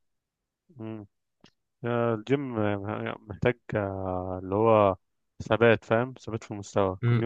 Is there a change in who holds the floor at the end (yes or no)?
yes